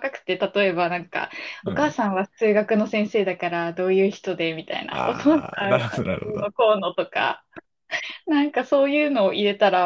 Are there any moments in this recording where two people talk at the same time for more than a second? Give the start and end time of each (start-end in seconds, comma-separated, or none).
4.9-6.5